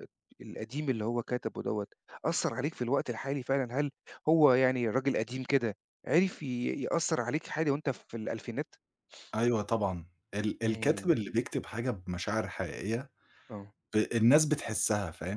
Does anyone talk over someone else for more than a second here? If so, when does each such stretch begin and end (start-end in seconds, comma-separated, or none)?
none